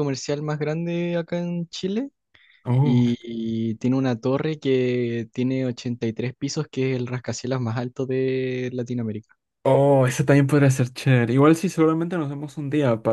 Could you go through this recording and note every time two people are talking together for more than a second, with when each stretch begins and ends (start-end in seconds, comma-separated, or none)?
none